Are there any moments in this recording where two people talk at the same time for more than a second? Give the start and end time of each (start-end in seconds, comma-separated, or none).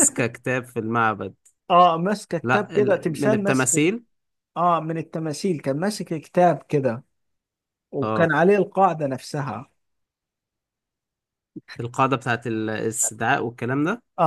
2.4-3.9